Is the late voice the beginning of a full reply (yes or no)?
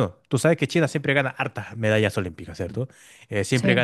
no